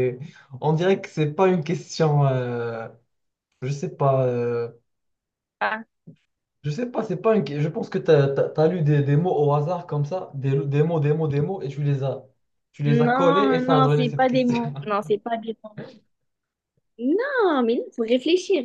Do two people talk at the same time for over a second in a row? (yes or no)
yes